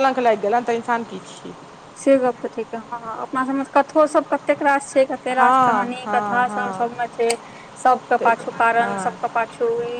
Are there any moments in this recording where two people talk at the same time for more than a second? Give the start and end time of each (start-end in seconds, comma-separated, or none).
5.3-7.0